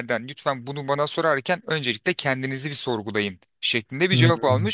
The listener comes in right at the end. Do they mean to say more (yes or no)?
no